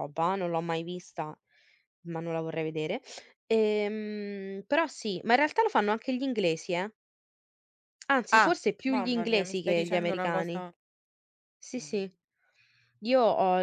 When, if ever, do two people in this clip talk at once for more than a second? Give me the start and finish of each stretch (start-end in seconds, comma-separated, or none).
8.3-10.6